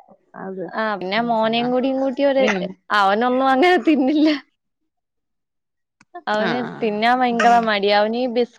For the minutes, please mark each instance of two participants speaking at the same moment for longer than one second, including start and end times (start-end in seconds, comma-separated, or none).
none